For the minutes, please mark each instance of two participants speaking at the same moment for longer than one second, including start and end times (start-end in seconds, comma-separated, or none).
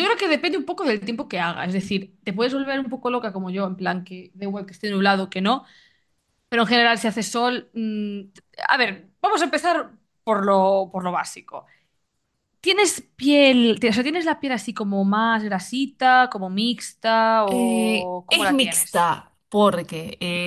17.5-19.1